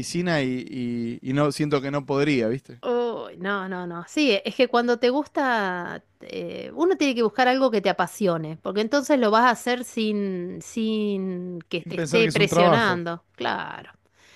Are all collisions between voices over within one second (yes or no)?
no